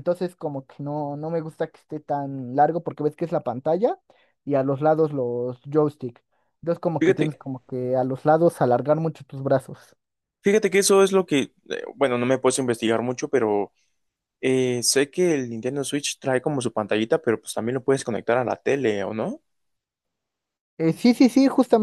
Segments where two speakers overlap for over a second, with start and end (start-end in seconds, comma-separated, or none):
none